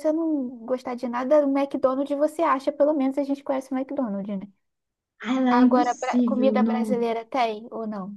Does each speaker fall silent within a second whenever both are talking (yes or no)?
no